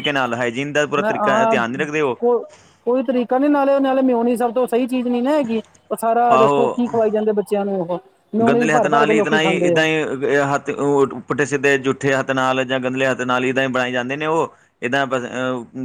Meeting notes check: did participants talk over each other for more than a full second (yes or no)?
yes